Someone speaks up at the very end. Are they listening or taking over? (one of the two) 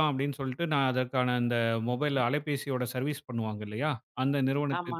listening